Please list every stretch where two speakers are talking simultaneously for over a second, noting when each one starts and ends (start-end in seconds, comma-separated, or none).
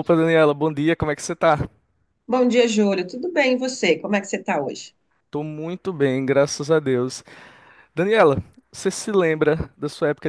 none